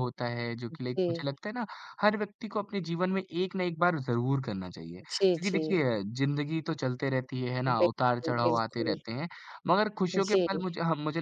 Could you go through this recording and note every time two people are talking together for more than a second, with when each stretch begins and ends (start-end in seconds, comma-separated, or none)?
7.7-9.0